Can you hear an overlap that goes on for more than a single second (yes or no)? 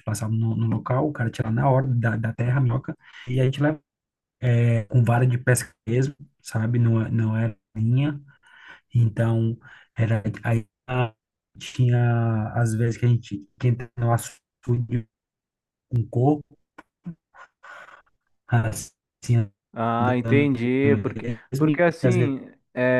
yes